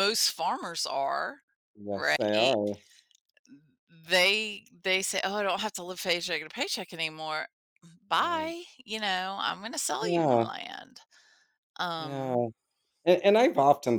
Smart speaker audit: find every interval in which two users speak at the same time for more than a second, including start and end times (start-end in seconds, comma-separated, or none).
none